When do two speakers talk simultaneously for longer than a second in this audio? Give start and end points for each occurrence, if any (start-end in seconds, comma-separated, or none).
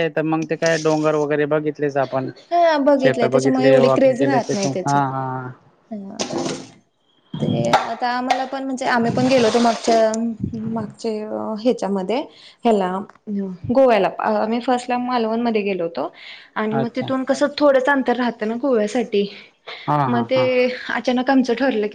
3.0-5.0